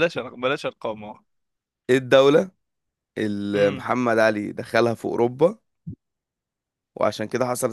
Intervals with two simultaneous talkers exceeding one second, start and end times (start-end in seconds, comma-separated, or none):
none